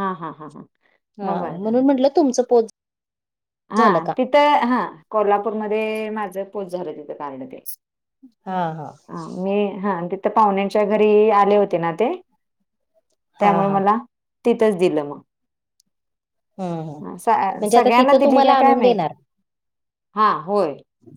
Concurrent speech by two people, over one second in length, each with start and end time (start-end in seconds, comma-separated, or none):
17.6-19.0